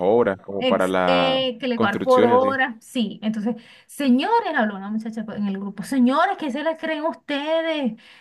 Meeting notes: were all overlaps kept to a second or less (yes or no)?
no